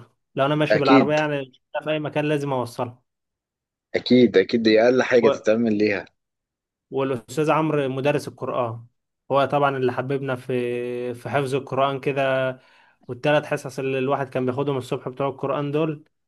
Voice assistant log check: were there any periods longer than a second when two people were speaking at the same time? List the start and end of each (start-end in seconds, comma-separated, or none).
none